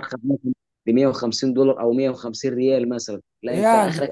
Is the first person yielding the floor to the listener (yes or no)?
no